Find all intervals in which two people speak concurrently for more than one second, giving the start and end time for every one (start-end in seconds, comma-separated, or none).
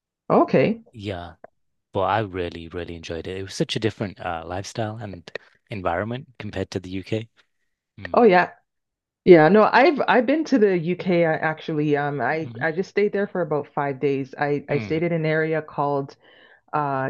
none